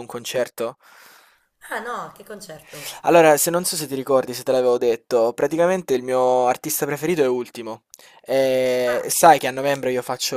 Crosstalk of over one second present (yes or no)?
no